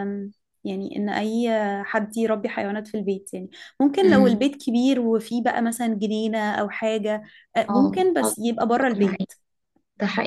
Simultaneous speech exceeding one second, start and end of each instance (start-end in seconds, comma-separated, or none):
7.7-9.3